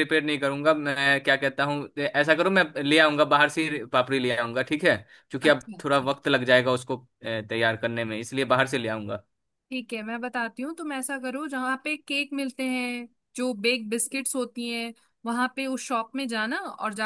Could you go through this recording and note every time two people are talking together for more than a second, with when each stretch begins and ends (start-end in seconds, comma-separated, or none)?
none